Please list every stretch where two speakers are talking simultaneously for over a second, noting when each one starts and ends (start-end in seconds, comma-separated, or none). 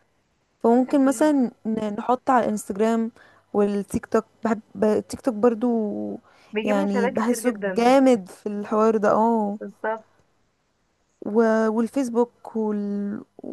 6.6-7.9